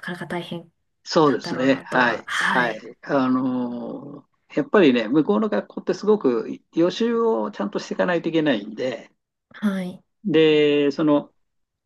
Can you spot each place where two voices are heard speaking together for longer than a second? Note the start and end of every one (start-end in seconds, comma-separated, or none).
1.2-2.9